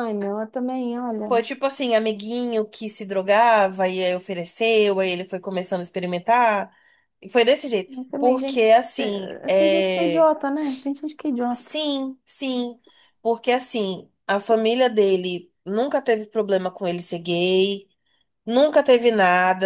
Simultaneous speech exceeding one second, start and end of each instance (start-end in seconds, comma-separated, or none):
7.9-10.3